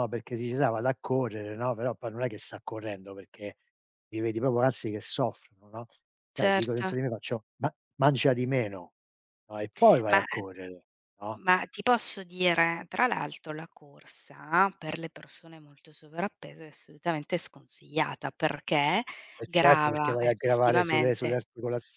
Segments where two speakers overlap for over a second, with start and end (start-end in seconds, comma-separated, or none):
19.4-21.4